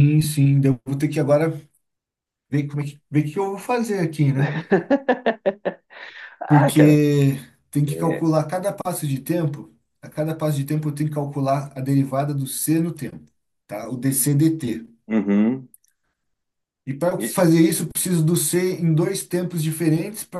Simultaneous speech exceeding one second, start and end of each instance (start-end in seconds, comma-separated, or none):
none